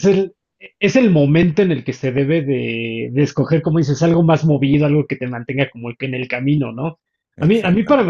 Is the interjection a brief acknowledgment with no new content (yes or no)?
yes